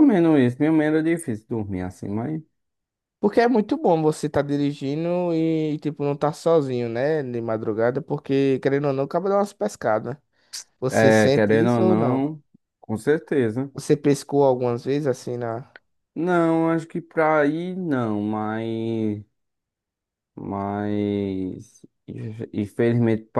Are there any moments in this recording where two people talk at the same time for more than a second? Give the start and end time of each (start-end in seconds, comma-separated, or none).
10.9-12.2